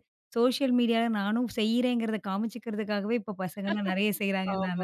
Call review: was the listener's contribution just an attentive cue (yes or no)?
no